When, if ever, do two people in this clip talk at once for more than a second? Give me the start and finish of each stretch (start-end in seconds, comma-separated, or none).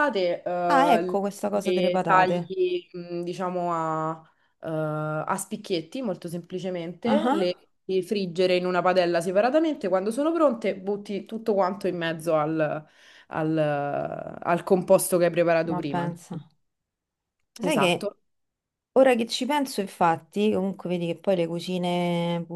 0.7-2.5